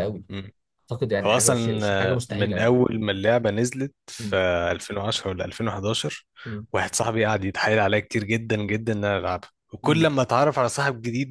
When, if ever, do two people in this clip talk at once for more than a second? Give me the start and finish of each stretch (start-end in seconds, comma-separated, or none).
1.2-2.8